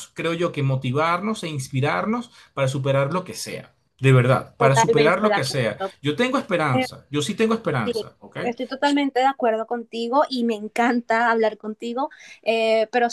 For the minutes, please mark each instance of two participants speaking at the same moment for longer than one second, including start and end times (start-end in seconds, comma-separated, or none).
4.6-6.0